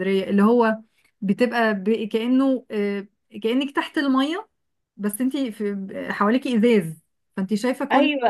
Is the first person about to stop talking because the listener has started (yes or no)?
yes